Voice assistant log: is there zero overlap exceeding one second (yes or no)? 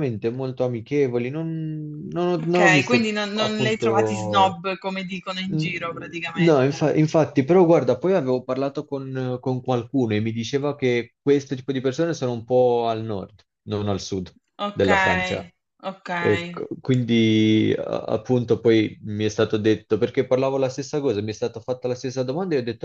no